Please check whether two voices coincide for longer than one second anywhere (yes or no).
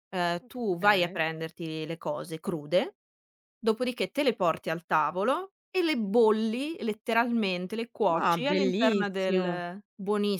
yes